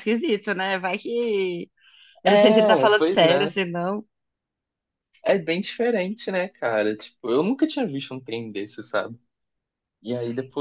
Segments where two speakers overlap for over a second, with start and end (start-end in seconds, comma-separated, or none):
2.2-3.5